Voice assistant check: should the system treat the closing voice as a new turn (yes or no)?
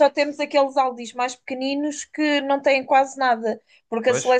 no